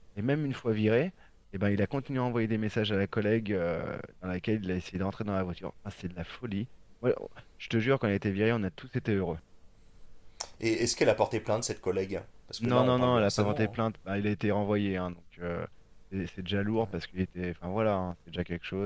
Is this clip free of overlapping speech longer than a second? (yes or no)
no